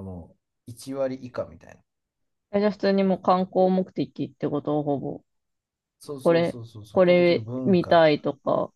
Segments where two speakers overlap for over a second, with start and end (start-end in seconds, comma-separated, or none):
6.2-8.1